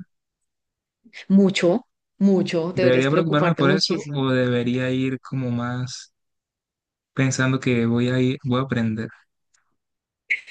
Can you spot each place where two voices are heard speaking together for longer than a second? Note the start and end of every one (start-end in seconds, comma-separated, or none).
2.7-4.2